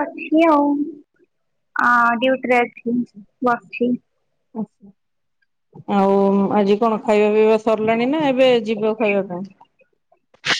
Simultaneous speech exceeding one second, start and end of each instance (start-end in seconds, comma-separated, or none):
none